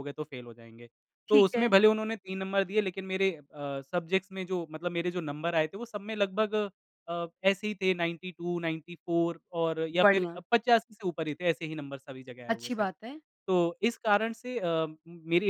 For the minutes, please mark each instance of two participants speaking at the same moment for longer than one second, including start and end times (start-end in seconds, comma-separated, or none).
none